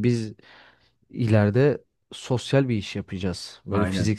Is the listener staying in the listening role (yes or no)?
yes